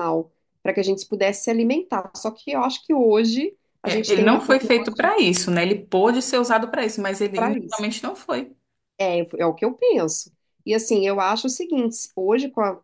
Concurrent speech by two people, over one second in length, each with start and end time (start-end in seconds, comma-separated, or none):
3.8-5.1